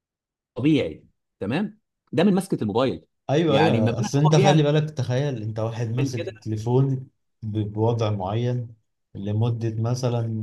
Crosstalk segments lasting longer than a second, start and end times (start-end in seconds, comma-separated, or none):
3.5-4.7